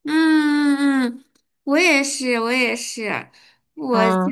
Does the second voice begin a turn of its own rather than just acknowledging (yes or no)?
no